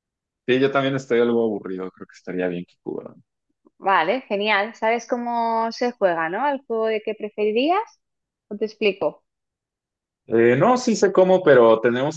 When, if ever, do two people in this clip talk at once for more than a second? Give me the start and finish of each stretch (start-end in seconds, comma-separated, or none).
none